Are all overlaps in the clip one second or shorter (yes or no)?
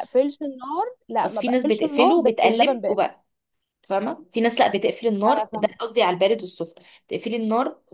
no